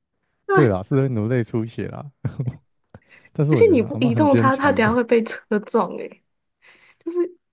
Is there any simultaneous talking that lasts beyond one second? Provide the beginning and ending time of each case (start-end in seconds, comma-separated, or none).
3.5-5.0